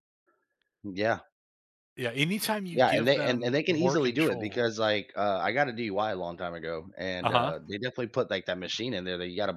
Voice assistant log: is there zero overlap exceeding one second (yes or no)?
no